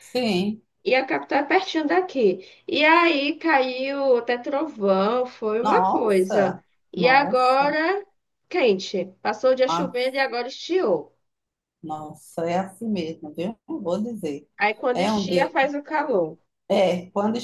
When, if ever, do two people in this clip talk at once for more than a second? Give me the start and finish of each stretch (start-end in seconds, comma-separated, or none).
5.6-7.8